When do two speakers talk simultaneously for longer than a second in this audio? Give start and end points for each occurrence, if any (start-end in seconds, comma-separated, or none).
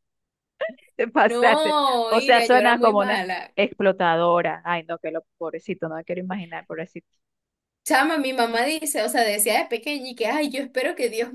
1.3-3.5